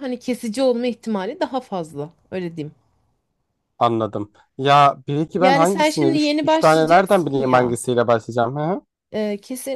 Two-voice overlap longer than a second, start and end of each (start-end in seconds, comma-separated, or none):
5.4-7.8